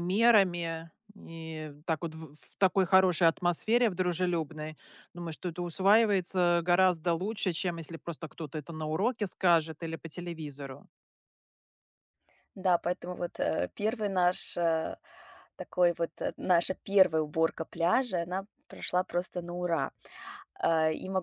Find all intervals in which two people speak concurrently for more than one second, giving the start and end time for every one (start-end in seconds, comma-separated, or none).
none